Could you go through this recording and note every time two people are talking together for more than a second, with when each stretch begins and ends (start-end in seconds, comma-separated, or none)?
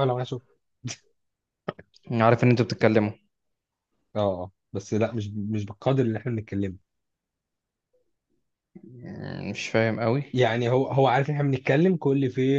none